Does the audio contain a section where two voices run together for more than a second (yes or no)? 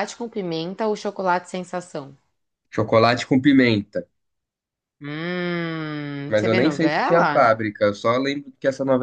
yes